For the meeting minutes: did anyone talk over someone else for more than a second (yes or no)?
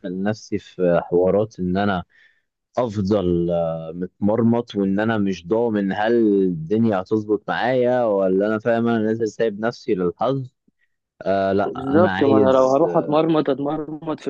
yes